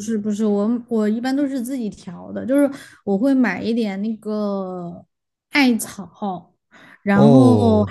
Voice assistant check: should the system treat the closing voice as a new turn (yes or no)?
no